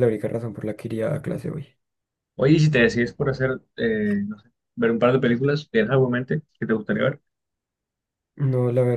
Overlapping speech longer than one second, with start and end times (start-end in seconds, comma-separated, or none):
none